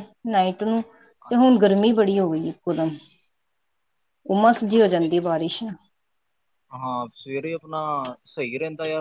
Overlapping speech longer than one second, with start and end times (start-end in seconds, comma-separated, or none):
none